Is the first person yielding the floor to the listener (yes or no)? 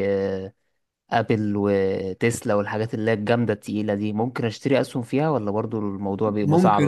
yes